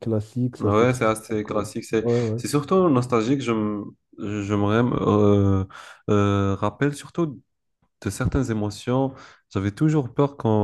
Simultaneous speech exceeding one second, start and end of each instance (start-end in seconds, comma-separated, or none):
0.6-2.4